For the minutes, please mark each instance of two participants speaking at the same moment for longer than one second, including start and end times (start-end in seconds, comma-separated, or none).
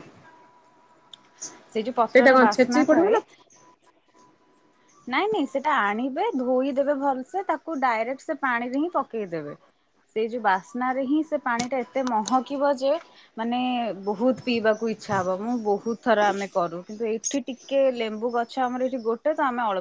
1.8-3.2